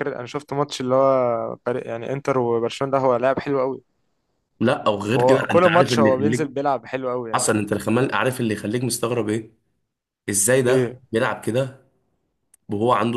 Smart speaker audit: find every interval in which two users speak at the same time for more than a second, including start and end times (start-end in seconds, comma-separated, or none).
5.1-6.5